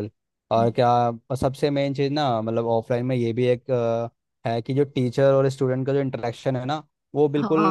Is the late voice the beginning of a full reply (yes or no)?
no